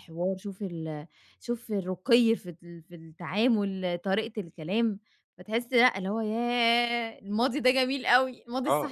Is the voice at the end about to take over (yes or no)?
yes